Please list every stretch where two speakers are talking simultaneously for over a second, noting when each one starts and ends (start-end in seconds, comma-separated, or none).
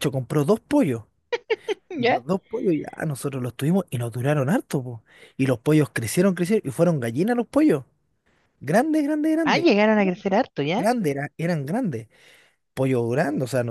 none